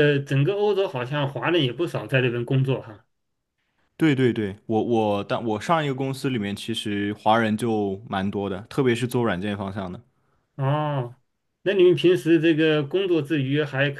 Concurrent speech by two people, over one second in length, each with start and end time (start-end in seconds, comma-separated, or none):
none